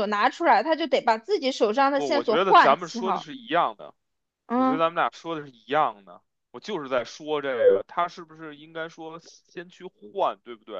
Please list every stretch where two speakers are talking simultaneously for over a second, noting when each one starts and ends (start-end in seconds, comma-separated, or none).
1.9-3.3